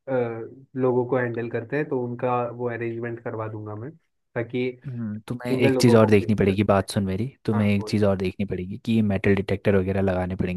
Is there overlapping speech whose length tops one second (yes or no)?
yes